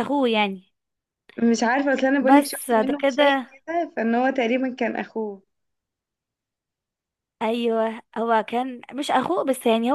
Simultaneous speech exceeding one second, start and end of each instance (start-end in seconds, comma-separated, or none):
2.2-3.5